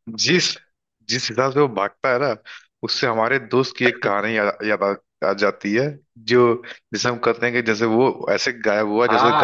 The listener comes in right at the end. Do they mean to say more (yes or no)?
yes